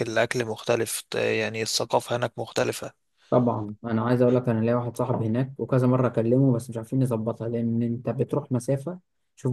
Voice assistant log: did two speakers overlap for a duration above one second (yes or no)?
no